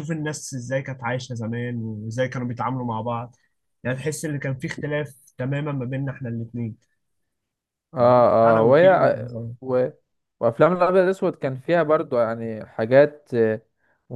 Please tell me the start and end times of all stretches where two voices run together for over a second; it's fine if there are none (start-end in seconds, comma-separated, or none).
8.0-9.5